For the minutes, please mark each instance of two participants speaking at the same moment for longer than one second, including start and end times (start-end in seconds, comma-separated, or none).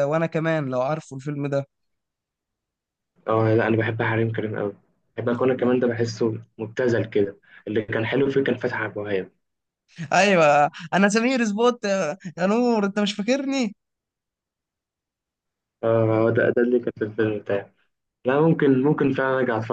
none